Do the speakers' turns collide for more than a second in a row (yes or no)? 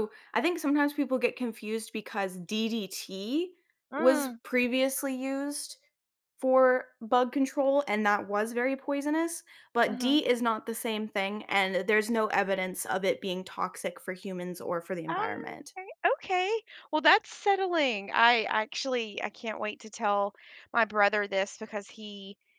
no